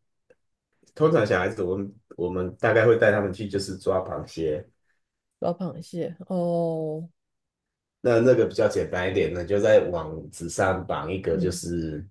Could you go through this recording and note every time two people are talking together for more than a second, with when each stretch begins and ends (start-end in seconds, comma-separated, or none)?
none